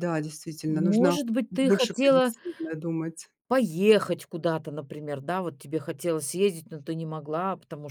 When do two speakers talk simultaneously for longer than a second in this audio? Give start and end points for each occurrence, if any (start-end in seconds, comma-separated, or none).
0.7-2.3